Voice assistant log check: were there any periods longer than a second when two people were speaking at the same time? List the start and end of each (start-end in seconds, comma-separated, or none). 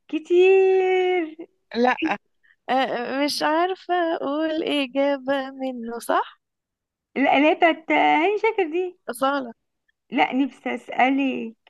none